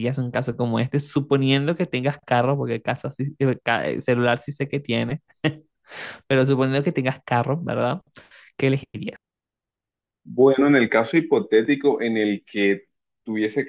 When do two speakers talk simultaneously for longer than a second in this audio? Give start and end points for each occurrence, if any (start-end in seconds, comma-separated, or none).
none